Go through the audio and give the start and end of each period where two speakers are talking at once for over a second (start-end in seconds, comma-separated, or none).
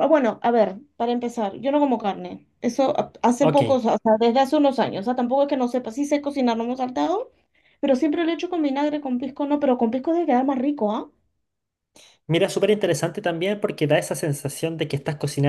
none